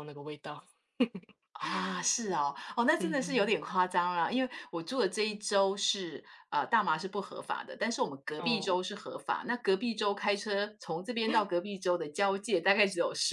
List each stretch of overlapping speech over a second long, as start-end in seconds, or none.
none